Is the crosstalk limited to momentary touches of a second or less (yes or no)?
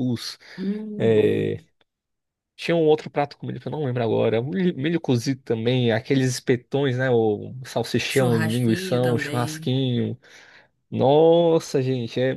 no